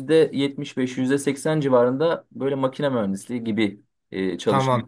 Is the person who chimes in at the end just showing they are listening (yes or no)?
no